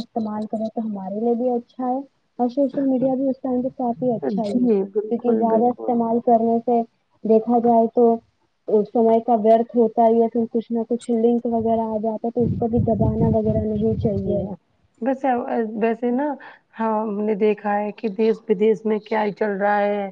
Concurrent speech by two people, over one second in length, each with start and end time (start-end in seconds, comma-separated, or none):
4.4-6.0